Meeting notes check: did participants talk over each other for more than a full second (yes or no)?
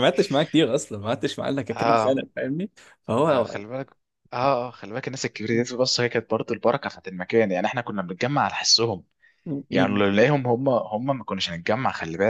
no